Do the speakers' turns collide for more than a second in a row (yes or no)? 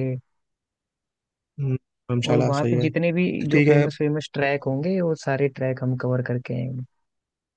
yes